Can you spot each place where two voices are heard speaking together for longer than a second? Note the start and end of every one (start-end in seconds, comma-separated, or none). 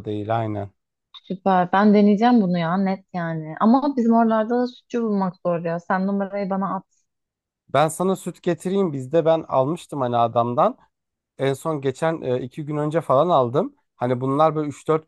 none